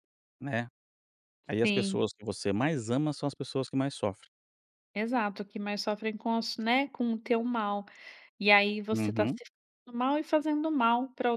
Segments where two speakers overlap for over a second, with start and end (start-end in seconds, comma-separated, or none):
none